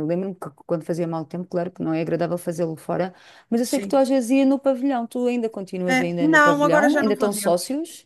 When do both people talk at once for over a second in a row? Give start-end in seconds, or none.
5.9-7.6